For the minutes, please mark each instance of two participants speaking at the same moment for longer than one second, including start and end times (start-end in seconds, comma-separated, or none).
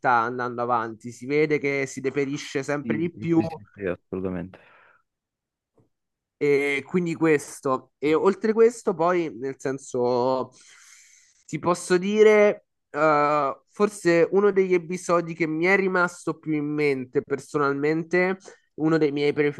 none